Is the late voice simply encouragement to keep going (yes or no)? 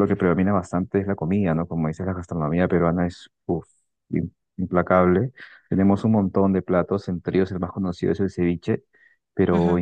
yes